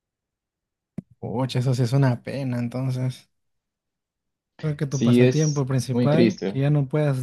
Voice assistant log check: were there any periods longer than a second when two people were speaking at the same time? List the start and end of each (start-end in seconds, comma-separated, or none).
4.9-6.6